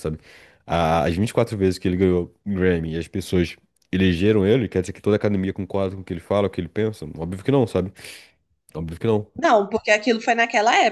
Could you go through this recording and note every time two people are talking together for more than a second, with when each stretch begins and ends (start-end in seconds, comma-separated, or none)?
none